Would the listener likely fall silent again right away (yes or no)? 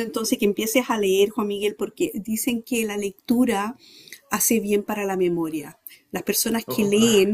yes